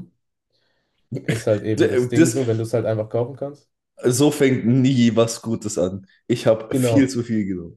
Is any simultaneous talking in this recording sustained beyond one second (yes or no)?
no